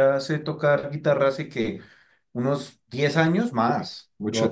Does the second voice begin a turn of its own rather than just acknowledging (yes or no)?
no